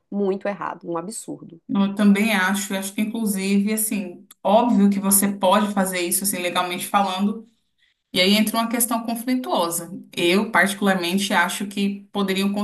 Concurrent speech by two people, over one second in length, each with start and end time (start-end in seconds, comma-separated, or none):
none